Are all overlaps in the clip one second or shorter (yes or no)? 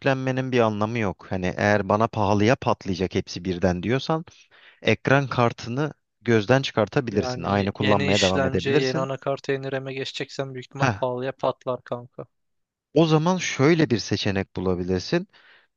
no